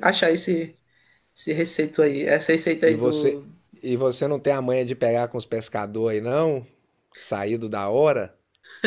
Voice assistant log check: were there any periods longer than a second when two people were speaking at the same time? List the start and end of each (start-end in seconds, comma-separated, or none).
none